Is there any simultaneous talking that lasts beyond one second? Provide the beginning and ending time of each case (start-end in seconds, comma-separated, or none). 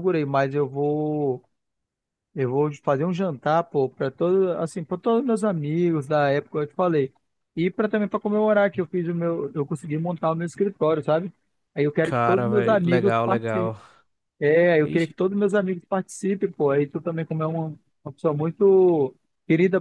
12.0-13.8